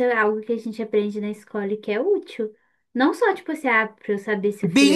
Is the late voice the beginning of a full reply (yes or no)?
yes